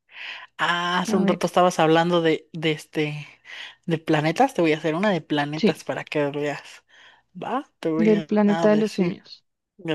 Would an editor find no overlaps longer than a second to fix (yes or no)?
no